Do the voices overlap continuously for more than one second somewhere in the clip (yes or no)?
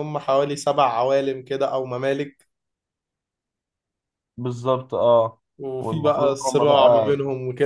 yes